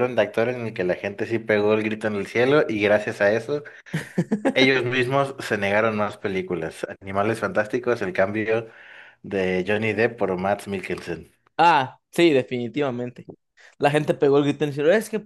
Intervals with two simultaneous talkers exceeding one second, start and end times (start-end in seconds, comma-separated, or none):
none